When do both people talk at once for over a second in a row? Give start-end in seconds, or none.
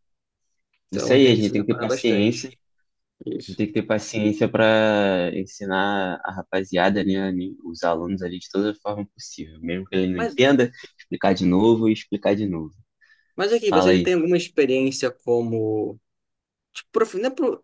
0.9-2.5